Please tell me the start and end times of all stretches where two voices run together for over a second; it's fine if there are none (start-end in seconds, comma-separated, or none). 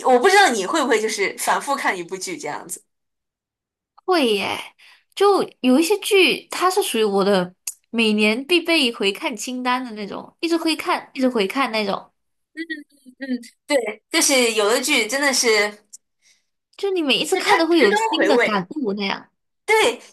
17.3-18.7